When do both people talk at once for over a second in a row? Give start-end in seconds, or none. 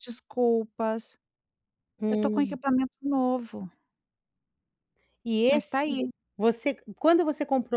none